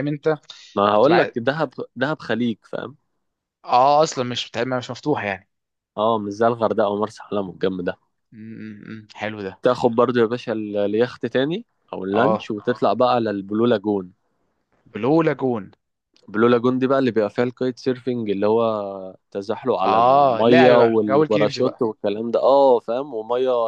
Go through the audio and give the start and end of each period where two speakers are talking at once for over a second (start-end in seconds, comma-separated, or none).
19.8-21.9